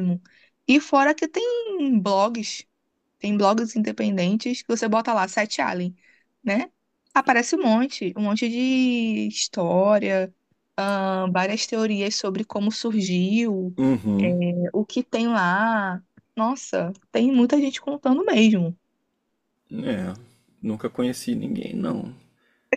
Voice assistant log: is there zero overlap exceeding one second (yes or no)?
yes